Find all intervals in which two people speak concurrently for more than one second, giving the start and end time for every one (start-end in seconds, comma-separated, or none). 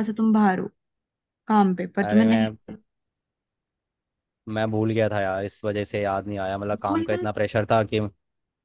none